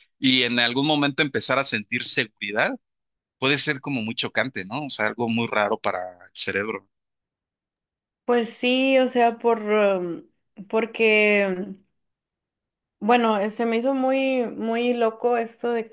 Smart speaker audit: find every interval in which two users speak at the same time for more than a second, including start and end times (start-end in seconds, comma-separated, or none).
none